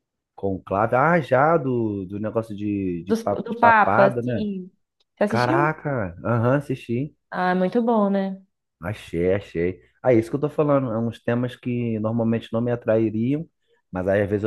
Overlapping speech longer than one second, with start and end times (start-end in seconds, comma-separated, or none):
3.0-4.5